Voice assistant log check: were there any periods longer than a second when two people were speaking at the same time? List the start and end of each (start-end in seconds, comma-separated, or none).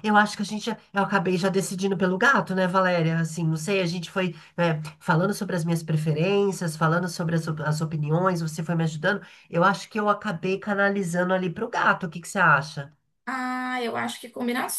none